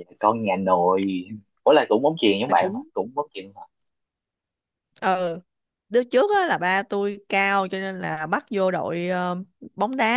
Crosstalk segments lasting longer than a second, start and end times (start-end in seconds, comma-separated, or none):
none